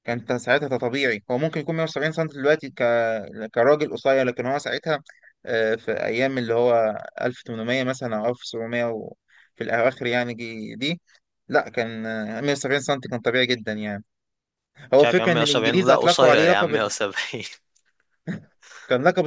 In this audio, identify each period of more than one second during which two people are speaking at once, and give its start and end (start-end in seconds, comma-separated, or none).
15.0-16.7